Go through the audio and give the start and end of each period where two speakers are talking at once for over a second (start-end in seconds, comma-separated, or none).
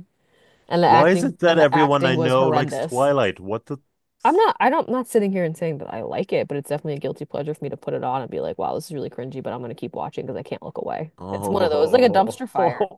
0.8-3.1, 11.2-12.5